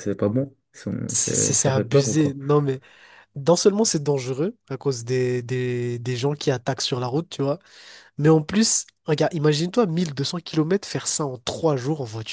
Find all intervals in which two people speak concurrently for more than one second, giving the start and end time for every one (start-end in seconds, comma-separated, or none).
1.1-2.4